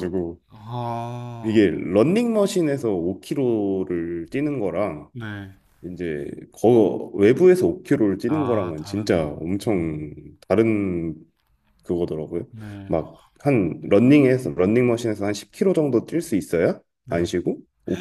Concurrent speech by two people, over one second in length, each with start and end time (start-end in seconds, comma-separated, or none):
8.3-10.1